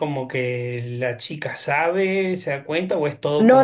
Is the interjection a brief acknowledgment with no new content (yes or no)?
no